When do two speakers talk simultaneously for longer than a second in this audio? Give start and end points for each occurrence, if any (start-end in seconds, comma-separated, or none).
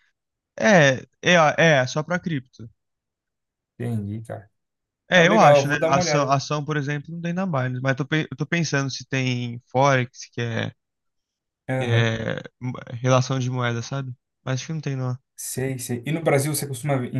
5.1-6.4